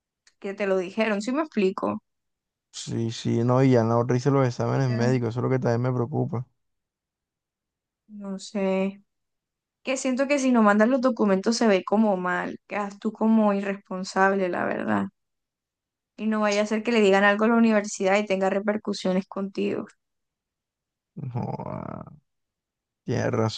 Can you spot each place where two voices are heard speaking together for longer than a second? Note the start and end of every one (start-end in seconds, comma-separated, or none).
none